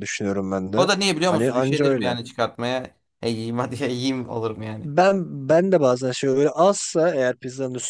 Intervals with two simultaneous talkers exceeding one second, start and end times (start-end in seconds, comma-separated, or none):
0.8-2.2